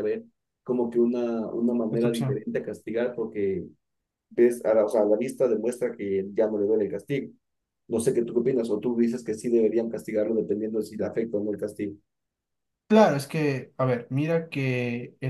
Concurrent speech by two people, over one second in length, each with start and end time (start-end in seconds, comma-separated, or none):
none